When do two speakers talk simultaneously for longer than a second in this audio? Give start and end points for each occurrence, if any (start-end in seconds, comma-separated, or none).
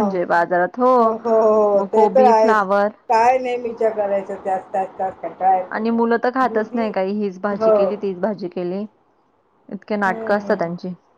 none